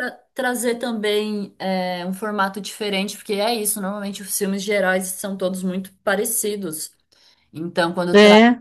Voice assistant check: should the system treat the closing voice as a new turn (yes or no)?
no